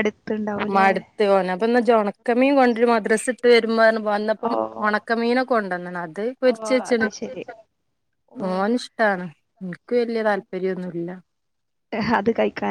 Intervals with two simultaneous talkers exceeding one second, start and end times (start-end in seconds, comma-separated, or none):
none